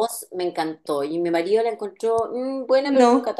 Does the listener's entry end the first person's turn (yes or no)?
no